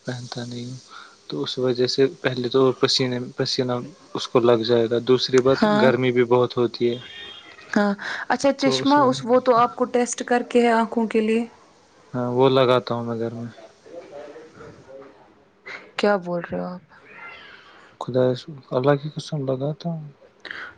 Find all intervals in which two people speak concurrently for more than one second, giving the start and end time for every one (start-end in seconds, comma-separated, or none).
none